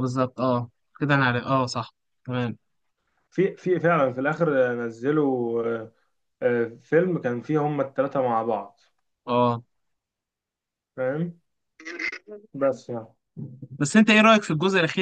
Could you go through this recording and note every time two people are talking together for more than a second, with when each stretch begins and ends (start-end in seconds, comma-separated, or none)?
none